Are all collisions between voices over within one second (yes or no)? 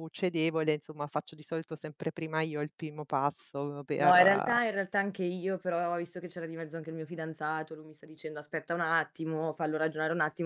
yes